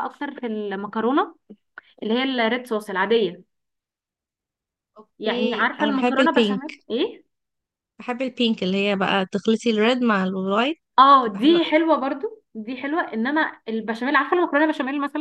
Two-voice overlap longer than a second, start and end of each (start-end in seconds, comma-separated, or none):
5.2-6.7